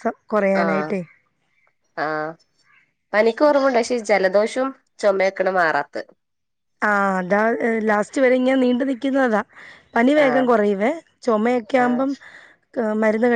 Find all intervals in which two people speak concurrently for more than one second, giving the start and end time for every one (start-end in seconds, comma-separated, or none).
none